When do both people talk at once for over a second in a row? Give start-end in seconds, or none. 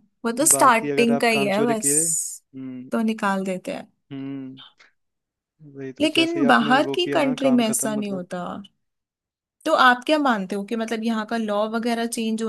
0.6-2.4, 6.0-8.2